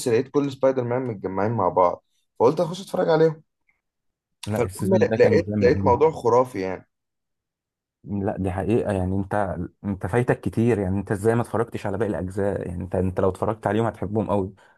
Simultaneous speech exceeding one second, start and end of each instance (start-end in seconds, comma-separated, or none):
4.6-6.0